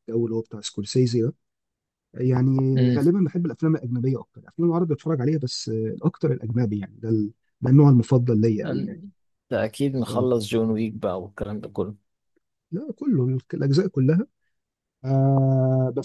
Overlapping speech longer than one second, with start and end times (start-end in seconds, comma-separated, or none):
none